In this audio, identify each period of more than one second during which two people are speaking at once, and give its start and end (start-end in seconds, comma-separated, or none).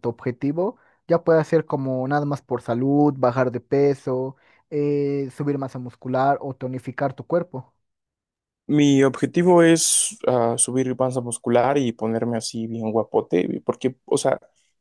none